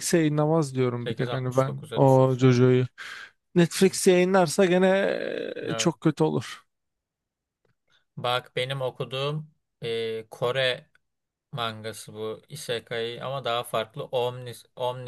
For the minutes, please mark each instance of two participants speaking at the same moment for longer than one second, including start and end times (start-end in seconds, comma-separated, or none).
0.9-2.6